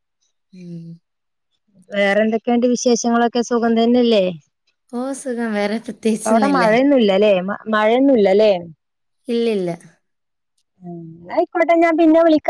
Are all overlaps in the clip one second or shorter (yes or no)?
yes